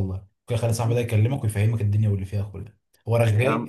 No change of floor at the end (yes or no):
yes